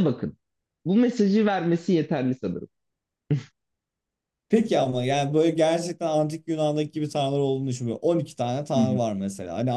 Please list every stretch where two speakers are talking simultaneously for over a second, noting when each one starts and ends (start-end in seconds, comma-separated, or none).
none